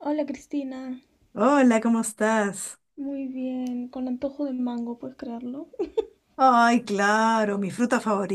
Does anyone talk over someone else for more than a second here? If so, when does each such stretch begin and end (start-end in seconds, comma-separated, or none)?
none